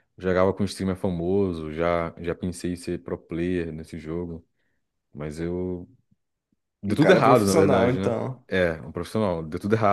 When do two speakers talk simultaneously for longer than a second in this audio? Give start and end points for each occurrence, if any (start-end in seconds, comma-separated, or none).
6.9-8.4